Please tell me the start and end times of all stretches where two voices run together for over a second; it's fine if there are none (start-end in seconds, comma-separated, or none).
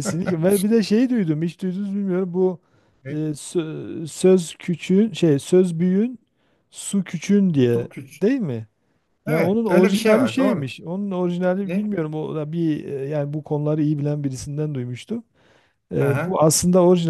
9.3-10.7